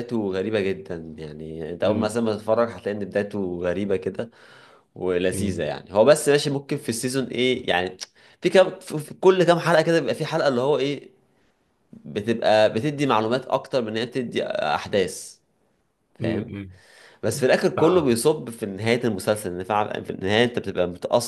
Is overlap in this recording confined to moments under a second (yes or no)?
yes